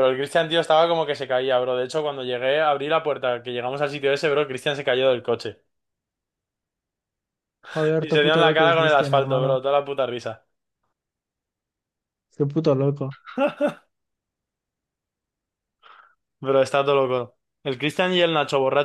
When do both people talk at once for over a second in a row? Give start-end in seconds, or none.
8.0-9.6